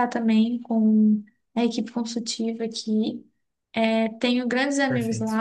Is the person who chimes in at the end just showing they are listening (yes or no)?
yes